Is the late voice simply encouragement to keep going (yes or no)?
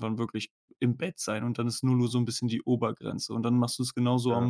yes